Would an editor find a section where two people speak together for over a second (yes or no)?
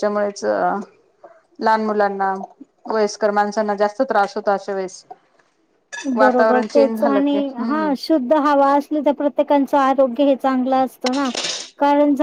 yes